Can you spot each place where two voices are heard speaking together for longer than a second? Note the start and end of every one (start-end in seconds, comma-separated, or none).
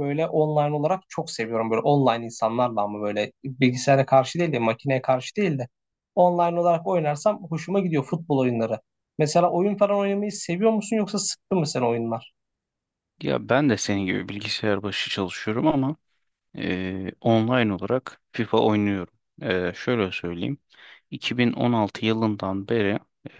none